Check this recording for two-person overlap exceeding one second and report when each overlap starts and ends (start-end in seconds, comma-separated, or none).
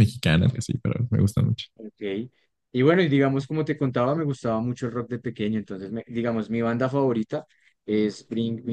none